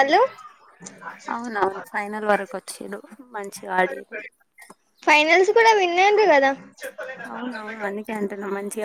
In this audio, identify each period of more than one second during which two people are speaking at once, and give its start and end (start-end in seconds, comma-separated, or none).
none